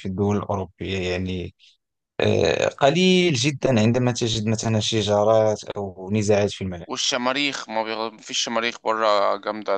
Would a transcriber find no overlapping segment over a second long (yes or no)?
yes